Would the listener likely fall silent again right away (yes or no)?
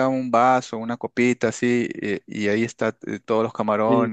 no